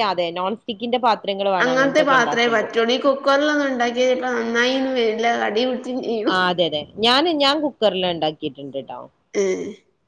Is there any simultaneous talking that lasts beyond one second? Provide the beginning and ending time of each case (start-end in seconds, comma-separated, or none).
none